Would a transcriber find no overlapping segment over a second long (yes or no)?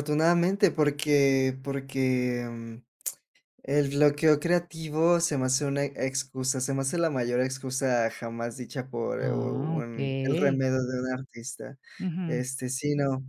no